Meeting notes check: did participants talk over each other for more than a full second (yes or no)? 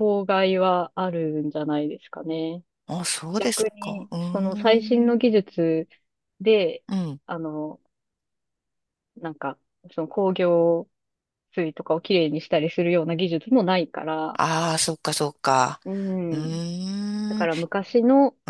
yes